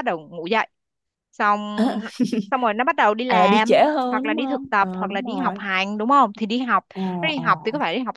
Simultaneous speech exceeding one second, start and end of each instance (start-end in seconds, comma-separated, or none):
3.3-5.6